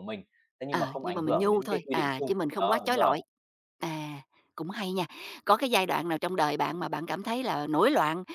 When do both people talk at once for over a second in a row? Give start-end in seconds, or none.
0.7-3.1